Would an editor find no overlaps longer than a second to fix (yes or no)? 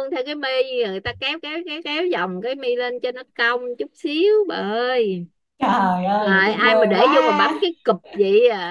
no